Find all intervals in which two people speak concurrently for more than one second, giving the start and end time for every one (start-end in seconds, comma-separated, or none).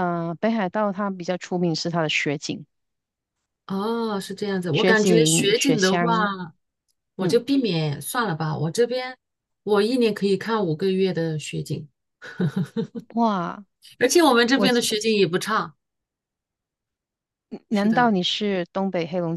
4.7-6.3